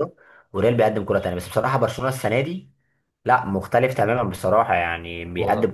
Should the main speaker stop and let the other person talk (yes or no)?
no